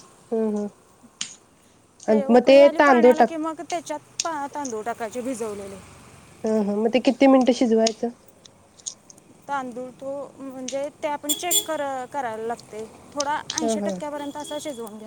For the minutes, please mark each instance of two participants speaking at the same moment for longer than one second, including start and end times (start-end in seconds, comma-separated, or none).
none